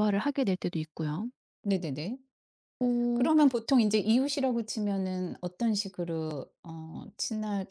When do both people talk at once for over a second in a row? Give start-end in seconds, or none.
none